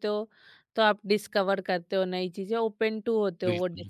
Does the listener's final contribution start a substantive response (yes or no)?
yes